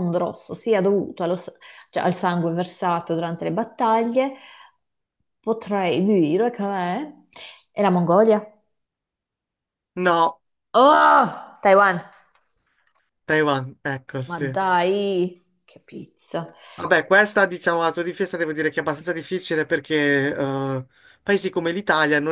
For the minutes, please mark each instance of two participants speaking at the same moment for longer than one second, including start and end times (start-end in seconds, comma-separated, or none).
none